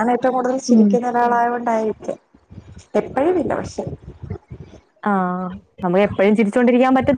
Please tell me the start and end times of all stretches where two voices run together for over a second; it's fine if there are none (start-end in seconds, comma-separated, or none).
none